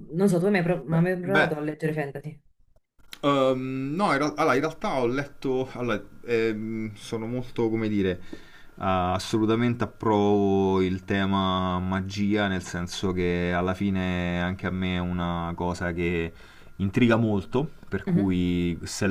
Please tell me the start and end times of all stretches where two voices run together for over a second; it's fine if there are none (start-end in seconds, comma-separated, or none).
none